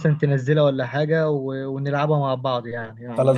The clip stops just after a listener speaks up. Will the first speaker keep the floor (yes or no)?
no